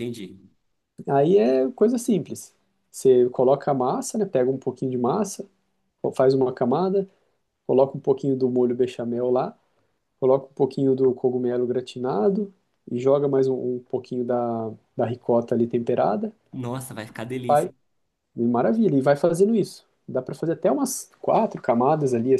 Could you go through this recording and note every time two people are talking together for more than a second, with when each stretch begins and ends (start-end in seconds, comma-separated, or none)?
none